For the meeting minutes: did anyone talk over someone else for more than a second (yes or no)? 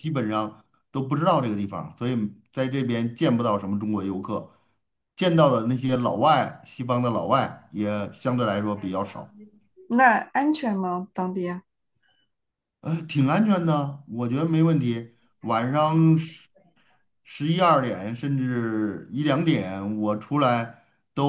no